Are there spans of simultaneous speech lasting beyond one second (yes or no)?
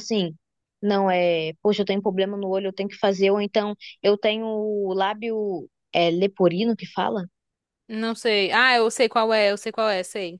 no